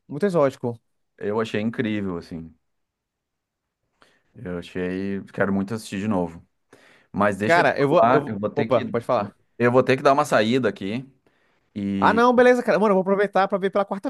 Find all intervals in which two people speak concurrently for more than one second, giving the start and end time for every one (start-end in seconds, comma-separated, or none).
7.4-8.9